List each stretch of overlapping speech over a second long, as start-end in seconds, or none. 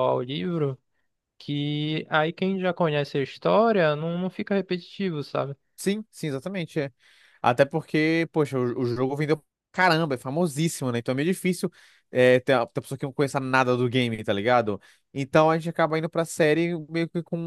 none